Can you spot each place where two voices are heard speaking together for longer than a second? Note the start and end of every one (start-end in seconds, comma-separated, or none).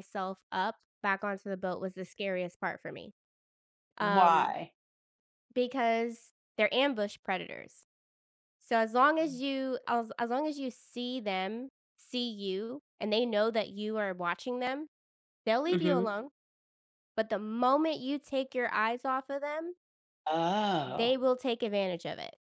none